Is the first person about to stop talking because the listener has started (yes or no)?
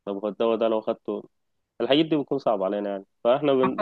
no